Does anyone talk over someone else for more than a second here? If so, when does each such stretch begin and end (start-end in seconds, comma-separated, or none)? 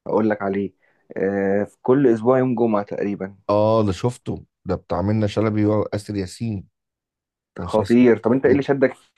none